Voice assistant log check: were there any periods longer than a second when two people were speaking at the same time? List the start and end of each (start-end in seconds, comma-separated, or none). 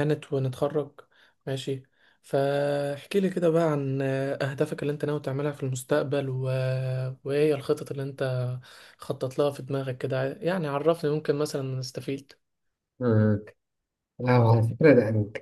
none